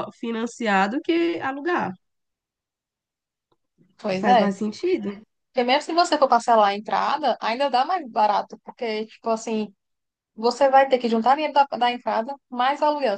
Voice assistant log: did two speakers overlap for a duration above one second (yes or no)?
no